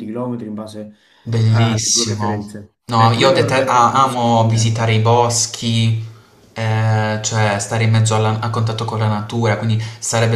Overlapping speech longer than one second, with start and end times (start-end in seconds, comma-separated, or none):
1.5-4.7